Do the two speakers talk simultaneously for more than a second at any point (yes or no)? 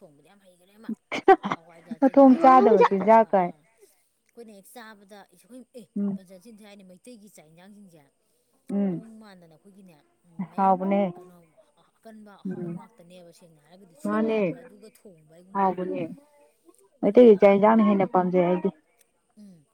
yes